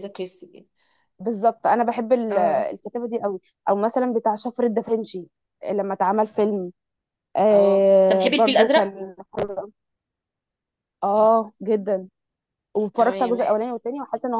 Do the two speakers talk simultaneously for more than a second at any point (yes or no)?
yes